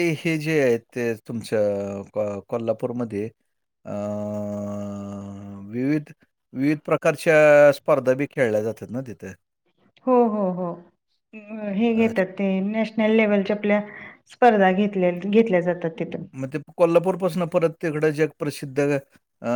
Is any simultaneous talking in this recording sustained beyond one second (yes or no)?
no